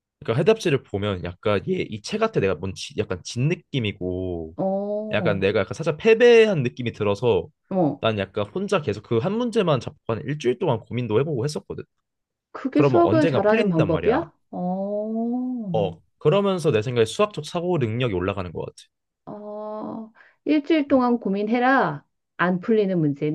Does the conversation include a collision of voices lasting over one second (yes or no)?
yes